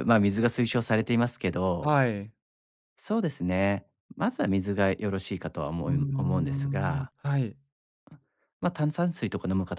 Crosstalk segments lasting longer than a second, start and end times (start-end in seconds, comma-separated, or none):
5.8-7.1